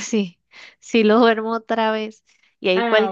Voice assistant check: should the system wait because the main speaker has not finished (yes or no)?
yes